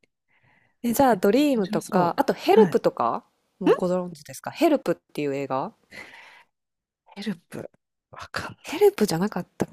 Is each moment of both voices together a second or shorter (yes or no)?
no